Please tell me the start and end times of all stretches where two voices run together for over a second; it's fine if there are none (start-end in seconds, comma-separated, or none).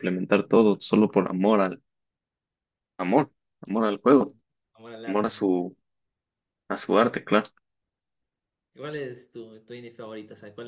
none